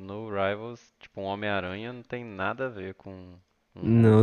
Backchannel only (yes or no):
no